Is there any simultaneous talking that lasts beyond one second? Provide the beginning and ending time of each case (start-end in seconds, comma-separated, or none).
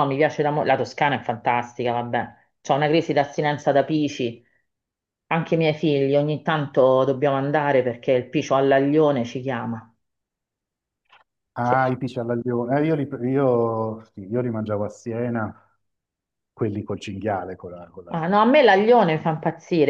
none